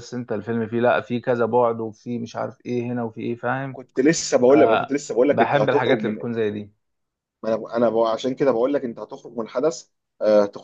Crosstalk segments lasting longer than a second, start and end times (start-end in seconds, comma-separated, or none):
4.5-6.2